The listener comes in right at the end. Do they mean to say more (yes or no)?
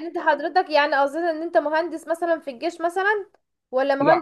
no